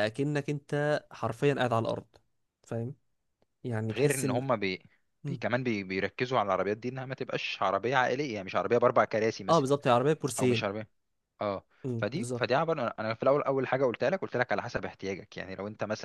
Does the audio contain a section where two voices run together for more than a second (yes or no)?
no